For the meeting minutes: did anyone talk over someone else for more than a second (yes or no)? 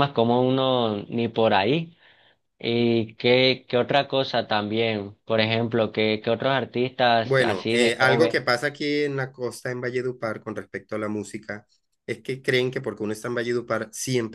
yes